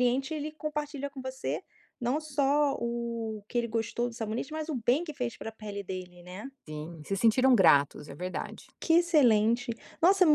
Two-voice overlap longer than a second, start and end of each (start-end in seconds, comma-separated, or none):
none